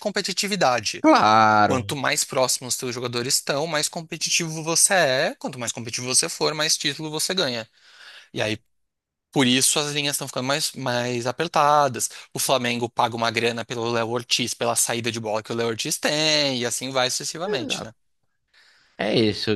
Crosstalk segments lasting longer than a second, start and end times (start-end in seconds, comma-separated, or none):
none